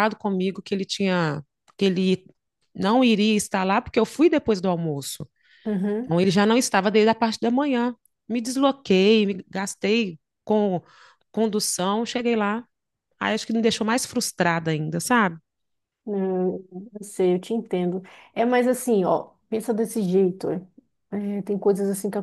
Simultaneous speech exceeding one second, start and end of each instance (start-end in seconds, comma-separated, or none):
none